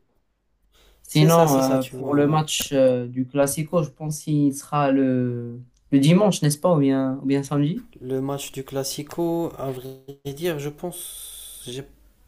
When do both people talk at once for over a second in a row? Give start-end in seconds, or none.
1.1-2.4